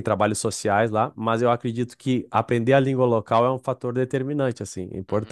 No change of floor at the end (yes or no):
no